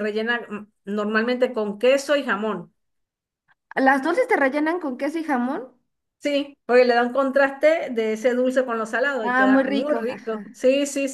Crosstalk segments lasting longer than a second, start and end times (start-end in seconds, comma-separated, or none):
9.2-10.4